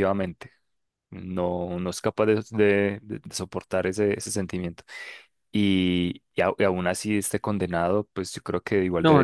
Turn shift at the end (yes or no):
yes